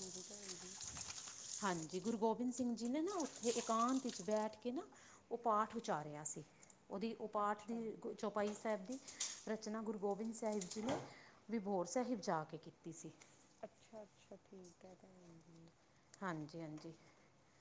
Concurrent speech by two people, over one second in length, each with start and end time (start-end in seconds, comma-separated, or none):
none